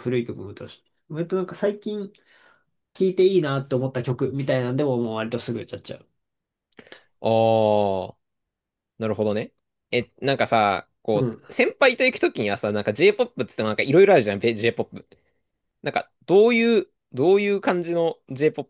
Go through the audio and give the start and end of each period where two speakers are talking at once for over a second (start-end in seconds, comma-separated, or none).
none